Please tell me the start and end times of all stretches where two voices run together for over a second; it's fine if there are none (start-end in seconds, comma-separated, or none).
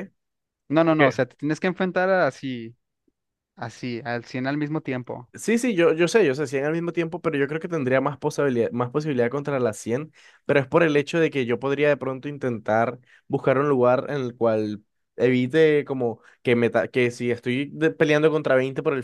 none